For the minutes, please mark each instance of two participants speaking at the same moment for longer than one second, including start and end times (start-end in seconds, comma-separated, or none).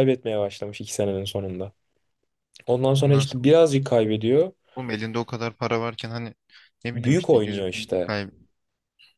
6.9-8.2